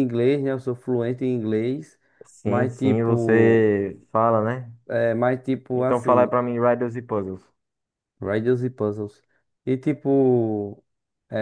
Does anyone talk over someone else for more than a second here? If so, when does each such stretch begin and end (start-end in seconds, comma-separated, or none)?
2.4-3.8